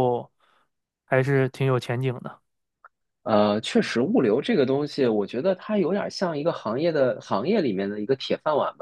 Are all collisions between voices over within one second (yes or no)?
yes